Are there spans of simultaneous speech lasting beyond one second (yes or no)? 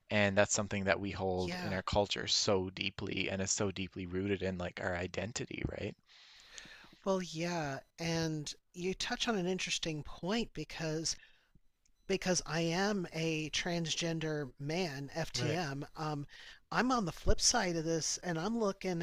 no